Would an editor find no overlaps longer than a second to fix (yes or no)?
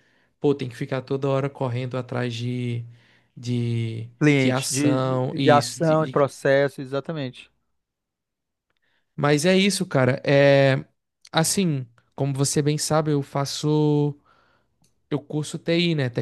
no